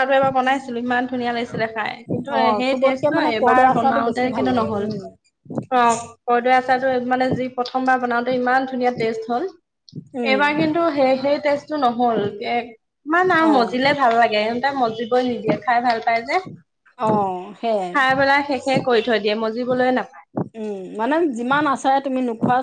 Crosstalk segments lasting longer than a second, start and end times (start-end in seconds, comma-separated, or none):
2.4-4.9